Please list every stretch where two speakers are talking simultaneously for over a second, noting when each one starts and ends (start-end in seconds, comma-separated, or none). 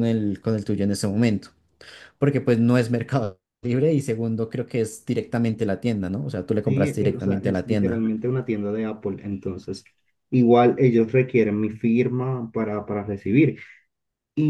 6.6-8.1